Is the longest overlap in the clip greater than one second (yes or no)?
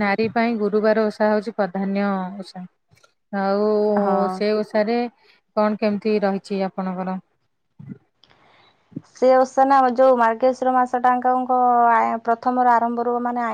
no